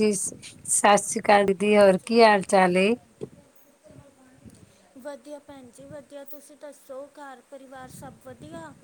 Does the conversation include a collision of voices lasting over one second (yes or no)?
no